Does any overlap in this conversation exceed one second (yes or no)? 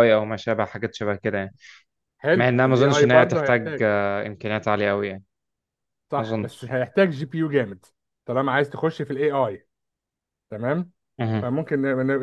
yes